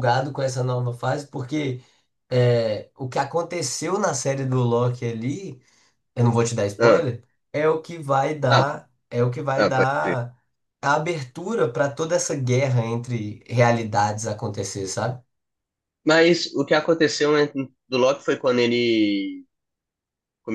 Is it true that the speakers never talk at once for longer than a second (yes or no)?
yes